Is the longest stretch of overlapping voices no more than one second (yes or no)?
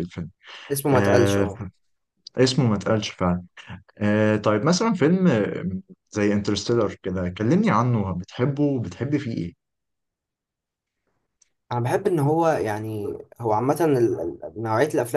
yes